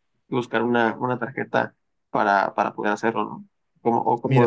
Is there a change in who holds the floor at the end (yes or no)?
yes